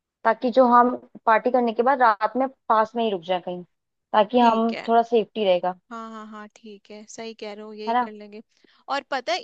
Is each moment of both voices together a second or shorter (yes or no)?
yes